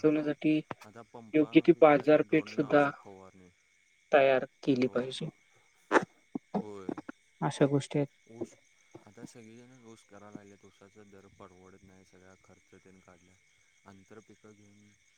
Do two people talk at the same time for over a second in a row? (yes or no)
yes